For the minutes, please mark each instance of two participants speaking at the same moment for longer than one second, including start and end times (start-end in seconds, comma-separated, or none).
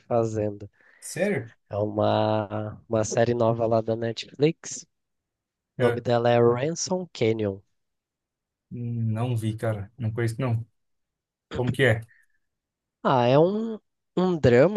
none